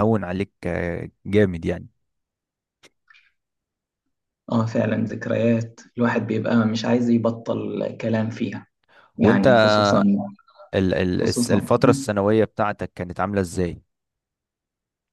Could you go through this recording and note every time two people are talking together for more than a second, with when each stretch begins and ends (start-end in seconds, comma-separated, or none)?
none